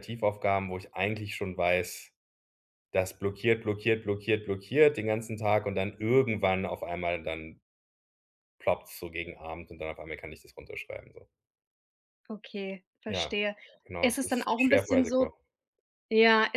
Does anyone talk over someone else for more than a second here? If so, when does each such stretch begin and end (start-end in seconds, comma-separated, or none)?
14.0-15.3